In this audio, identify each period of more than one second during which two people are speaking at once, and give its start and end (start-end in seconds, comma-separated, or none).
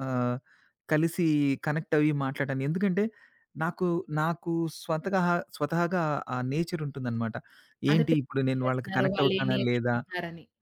7.9-9.9